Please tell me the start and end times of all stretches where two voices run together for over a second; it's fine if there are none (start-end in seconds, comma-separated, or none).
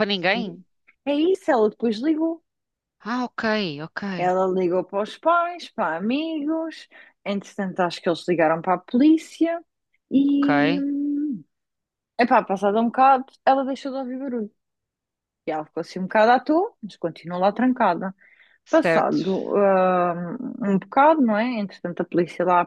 none